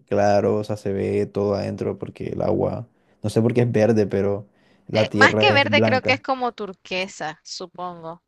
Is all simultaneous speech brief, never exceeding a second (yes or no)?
no